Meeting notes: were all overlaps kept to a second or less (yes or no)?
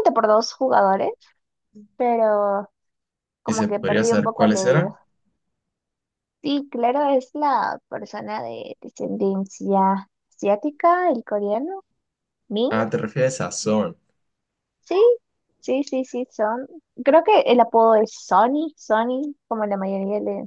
no